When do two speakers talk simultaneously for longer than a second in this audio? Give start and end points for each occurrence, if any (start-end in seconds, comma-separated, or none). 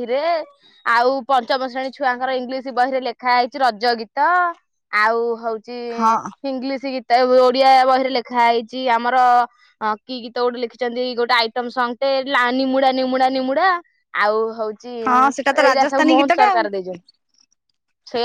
15.1-16.6